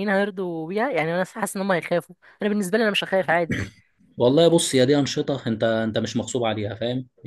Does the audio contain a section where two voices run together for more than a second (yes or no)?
no